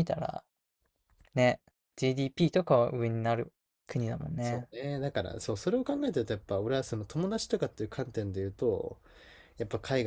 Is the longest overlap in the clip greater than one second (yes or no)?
no